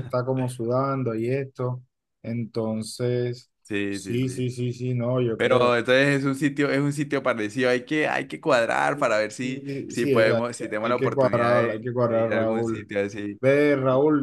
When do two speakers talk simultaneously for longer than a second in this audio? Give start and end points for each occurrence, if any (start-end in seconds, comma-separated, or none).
9.4-12.9